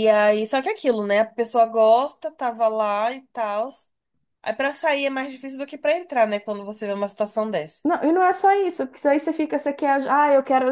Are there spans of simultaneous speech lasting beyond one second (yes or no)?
no